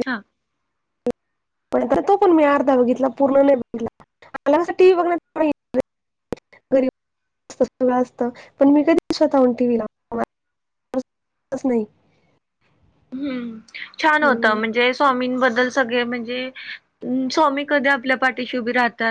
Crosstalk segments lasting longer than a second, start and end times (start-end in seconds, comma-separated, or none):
none